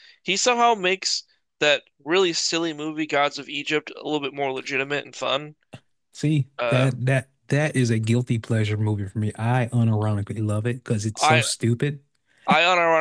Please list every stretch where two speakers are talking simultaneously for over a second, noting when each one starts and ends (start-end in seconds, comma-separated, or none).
none